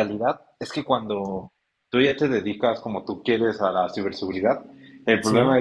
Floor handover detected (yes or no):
no